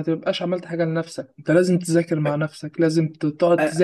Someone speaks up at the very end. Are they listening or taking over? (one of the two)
listening